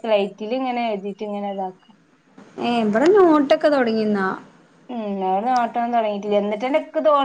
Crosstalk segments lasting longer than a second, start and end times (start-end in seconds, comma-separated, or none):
none